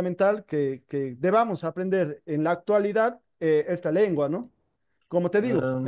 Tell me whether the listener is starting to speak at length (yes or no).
no